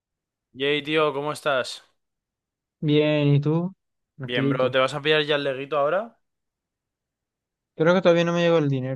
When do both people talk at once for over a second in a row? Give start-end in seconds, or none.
none